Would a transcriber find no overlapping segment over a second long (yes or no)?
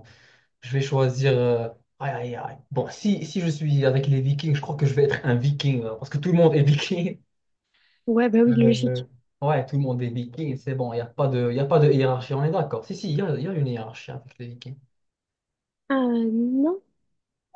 yes